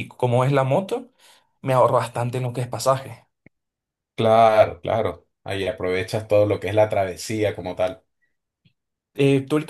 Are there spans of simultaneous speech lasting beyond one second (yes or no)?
no